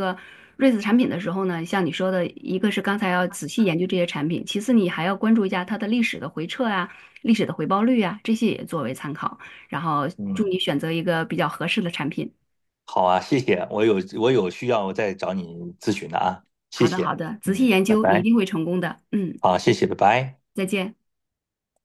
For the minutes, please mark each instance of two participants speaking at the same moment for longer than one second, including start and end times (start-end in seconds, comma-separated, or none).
16.7-18.3